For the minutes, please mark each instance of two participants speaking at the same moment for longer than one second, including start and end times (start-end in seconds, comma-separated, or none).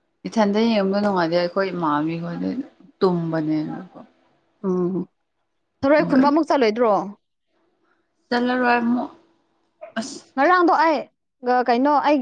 none